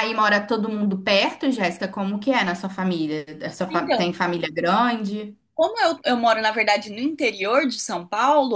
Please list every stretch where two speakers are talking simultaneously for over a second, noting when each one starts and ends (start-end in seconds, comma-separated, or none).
none